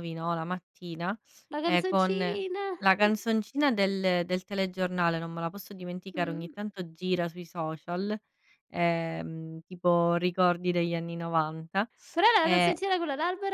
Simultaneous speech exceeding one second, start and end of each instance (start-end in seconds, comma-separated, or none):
none